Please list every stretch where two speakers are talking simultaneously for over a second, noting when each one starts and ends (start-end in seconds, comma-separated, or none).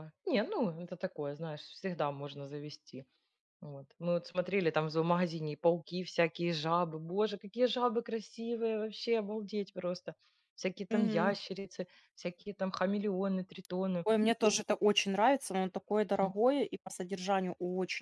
none